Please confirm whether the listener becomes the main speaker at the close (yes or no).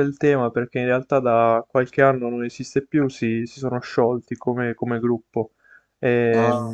no